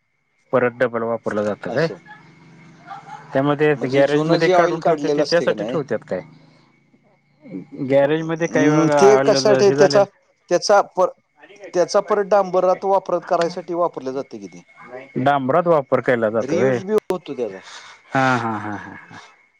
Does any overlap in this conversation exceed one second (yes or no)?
yes